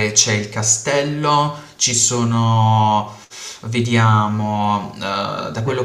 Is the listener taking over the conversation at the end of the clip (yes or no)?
no